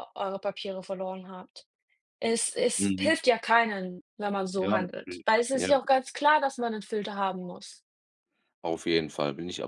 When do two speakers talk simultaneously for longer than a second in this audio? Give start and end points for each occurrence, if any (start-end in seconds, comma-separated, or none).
none